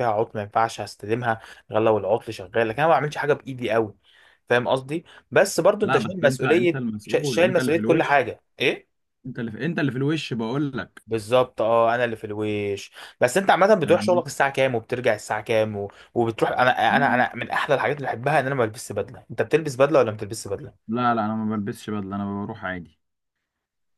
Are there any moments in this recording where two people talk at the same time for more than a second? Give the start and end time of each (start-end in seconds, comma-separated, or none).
5.8-8.3